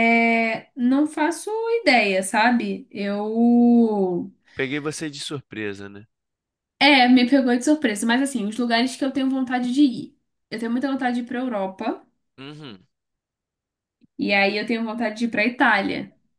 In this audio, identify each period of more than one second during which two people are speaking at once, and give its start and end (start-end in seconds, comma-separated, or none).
none